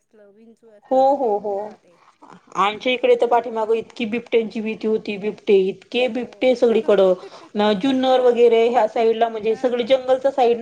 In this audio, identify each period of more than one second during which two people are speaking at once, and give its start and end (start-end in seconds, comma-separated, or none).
none